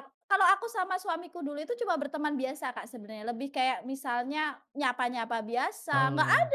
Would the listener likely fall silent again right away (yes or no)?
yes